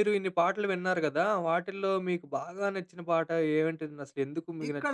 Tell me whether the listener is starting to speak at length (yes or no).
yes